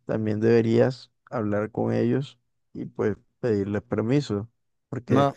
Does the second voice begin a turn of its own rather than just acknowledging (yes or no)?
no